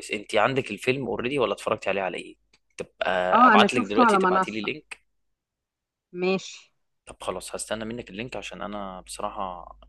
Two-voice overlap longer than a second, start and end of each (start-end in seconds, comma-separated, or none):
3.5-4.7